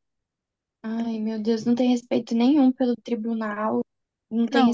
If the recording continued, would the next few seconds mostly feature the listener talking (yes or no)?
no